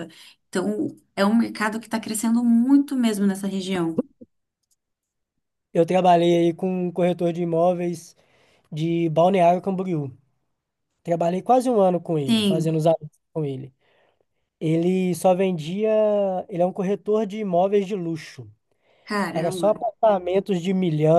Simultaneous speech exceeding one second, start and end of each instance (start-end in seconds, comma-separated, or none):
none